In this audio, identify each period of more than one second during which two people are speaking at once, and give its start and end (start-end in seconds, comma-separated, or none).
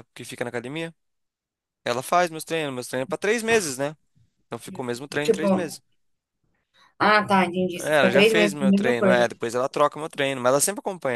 7.8-9.3